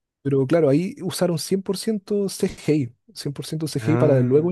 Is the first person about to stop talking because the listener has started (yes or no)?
no